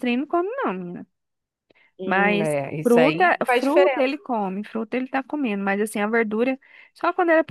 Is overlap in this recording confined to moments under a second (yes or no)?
no